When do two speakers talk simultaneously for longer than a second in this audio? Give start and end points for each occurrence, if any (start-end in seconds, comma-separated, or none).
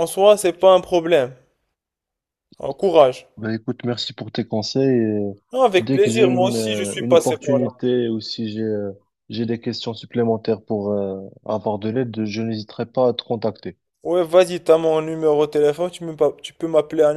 5.8-7.7